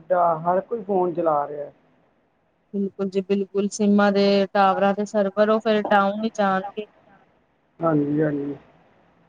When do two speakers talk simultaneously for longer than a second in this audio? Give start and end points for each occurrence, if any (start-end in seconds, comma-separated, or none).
none